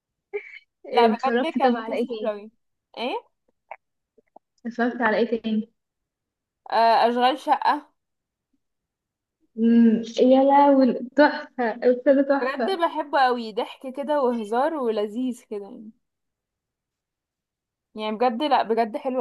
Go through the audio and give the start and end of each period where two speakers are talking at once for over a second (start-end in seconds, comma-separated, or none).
0.9-2.3